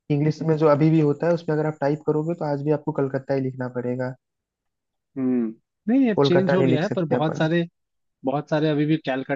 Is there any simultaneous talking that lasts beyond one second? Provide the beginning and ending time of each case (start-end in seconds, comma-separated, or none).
6.2-7.5